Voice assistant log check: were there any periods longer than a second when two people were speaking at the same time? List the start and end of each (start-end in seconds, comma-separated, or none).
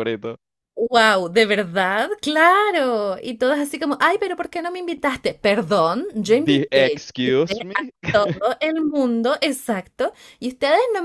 6.2-7.9